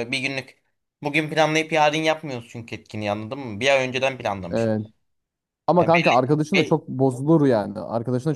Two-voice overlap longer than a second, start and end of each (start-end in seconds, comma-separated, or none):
none